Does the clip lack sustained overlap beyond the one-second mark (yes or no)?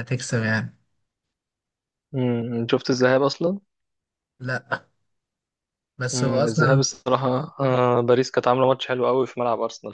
yes